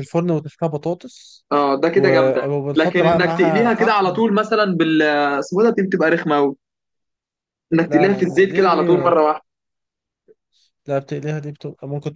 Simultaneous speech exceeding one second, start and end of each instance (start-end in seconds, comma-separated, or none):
1.9-4.2, 7.9-9.1